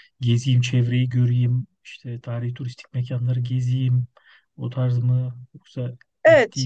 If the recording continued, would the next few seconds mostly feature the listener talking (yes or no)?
no